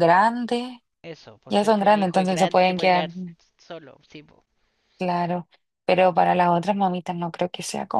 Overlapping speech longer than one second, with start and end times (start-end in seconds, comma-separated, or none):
1.5-3.1